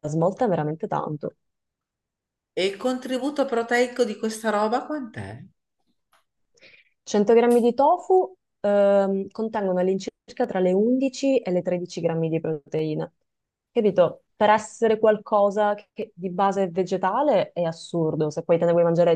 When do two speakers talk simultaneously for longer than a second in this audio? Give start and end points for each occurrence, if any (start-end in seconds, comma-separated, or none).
none